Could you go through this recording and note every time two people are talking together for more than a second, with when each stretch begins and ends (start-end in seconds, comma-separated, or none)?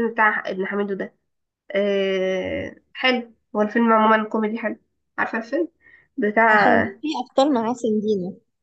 none